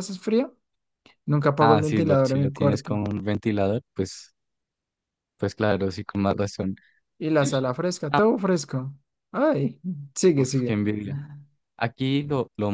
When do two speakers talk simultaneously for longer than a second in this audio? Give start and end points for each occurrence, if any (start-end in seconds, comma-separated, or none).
1.6-3.0